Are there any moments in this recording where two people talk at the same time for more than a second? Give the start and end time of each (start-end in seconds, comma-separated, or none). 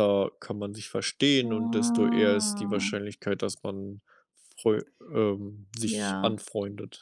1.4-2.9